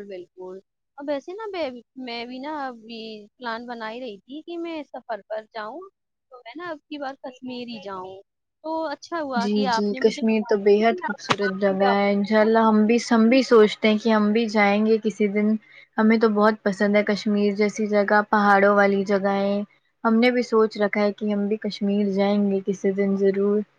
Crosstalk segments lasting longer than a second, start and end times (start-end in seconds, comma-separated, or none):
9.4-12.8